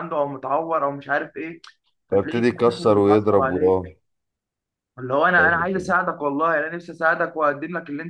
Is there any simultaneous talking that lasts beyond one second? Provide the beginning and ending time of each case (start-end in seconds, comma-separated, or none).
2.1-3.6